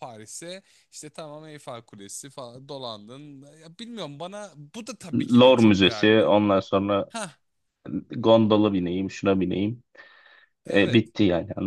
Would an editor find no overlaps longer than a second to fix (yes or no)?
no